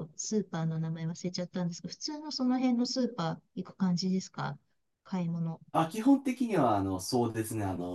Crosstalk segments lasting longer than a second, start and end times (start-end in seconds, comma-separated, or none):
none